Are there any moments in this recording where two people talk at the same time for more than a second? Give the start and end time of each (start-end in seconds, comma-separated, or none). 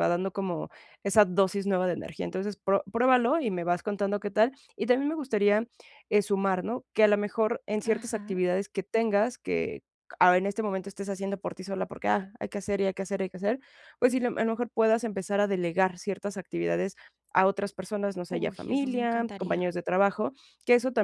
18.3-19.6